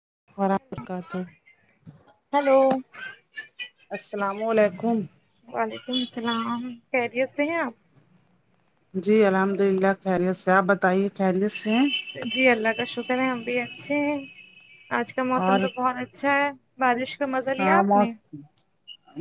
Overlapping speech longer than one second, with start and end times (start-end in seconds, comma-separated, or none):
none